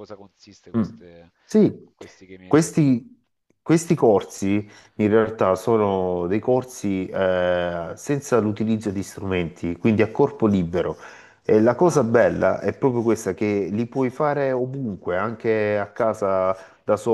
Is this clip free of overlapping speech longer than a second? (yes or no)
yes